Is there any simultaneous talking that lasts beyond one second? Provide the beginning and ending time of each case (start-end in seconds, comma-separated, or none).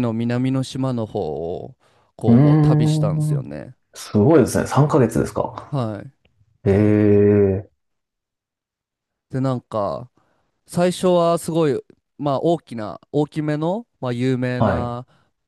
2.2-3.5